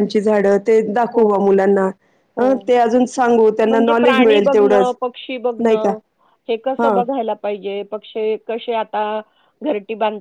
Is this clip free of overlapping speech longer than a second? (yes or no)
no